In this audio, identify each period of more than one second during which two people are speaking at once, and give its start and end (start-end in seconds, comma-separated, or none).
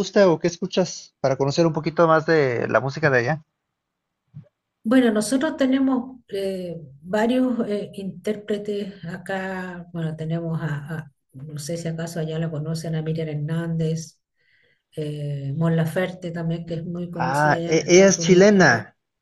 17.3-18.7